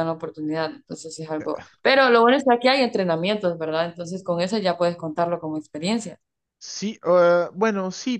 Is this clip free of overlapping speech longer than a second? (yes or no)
yes